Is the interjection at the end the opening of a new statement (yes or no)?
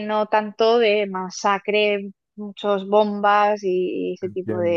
yes